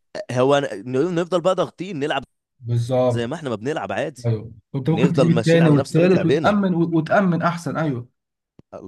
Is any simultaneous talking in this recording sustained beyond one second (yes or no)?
yes